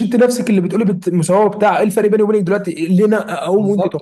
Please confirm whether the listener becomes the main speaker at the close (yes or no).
yes